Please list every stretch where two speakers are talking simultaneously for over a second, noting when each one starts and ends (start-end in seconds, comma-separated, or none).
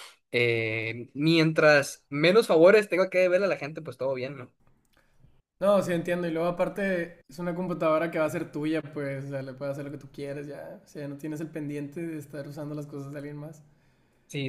none